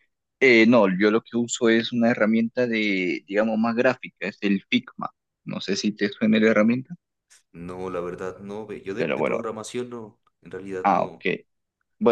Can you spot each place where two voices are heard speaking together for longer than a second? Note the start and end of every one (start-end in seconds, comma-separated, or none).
none